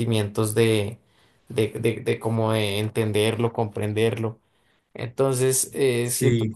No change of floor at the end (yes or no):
yes